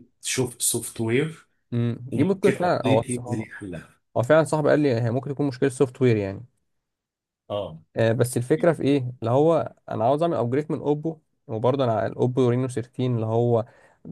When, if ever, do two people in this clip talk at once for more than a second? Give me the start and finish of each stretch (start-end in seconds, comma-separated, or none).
2.1-3.5